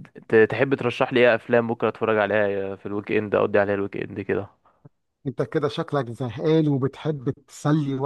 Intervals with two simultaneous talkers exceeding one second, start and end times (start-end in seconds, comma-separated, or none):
none